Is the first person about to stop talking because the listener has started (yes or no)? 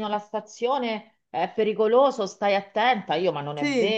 no